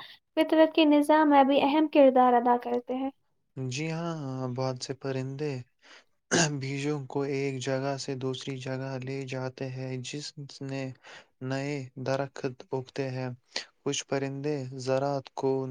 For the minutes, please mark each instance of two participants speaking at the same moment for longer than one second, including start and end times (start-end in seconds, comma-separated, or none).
none